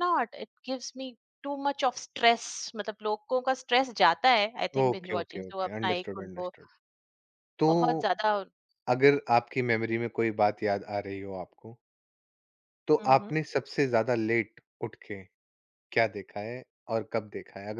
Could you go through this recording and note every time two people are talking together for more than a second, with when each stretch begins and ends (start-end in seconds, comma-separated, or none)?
4.8-6.5